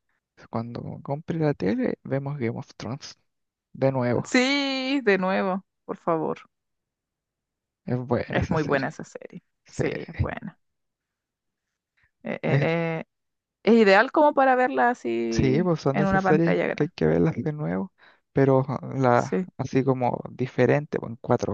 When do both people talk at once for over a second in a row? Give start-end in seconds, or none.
15.3-16.9